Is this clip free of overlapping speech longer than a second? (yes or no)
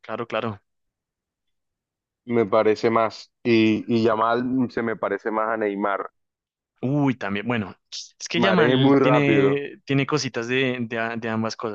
no